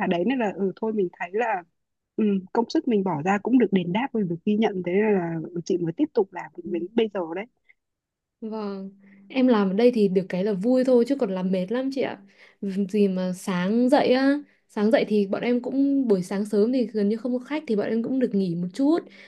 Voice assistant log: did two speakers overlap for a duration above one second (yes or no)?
no